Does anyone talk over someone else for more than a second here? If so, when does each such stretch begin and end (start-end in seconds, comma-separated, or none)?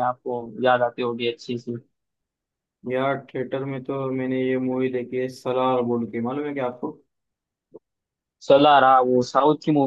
none